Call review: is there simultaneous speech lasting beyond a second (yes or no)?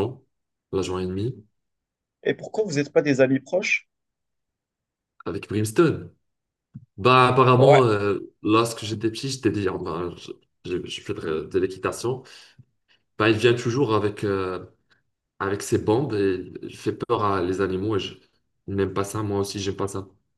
no